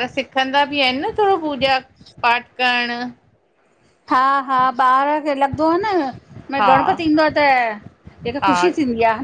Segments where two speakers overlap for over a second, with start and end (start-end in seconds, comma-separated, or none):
none